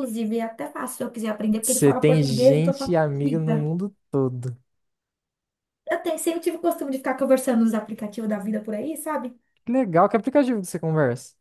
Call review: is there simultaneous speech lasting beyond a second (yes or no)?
yes